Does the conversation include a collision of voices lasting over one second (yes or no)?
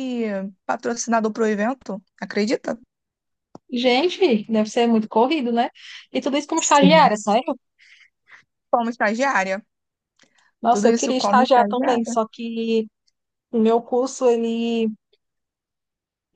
yes